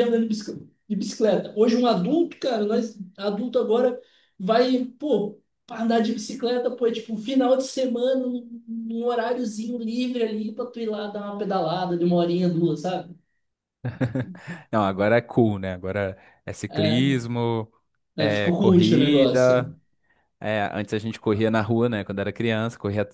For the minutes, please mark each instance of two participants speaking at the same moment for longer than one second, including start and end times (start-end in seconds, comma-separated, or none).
18.2-19.7